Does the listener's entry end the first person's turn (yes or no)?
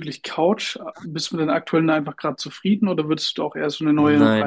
yes